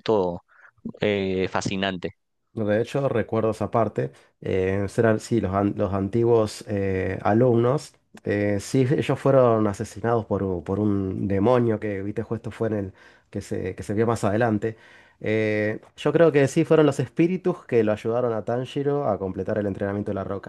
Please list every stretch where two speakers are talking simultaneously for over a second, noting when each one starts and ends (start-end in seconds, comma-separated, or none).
none